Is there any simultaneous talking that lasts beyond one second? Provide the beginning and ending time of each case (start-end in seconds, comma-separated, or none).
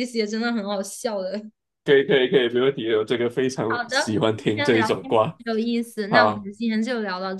3.7-5.4